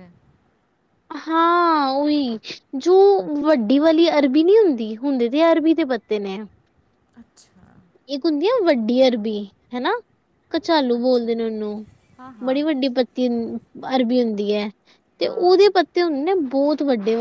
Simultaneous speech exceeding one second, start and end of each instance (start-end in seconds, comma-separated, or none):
none